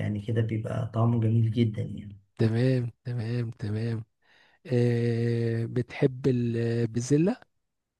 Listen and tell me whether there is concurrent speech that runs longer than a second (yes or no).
no